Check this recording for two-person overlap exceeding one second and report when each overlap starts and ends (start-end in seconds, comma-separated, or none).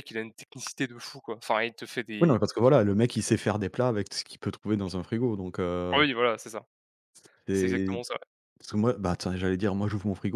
none